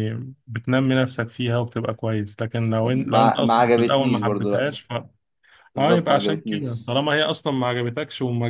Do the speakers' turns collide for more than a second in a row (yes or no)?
yes